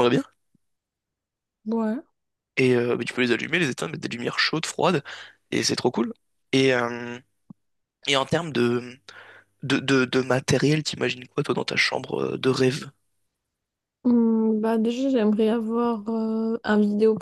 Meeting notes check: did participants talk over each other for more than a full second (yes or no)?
no